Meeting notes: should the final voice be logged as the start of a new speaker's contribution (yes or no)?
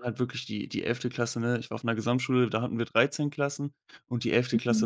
no